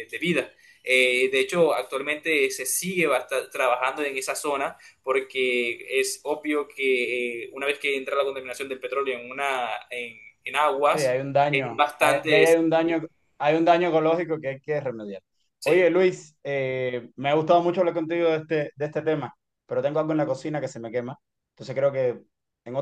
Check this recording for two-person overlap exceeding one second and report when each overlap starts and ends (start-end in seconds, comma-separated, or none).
10.9-12.4